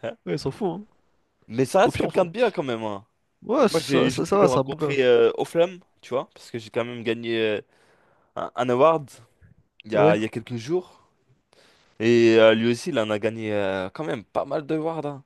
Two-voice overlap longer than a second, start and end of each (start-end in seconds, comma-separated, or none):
3.6-5.0